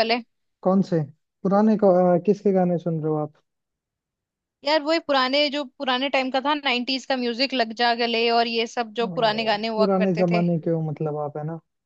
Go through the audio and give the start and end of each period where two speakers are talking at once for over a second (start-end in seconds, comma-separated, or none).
9.0-10.4